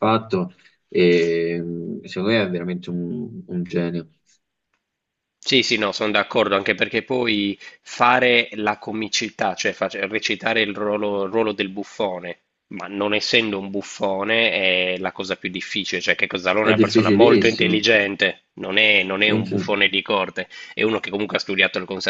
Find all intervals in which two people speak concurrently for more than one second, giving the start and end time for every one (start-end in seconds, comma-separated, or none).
16.6-17.9